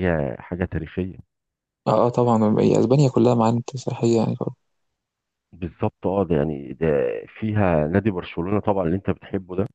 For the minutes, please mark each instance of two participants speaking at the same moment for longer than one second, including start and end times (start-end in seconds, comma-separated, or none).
none